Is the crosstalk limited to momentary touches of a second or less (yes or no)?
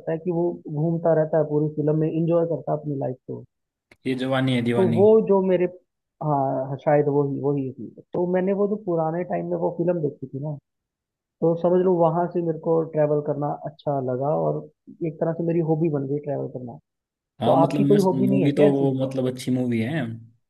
no